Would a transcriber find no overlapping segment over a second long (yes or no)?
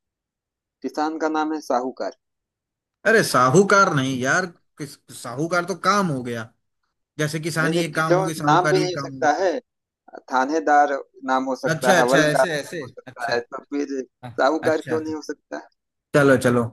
no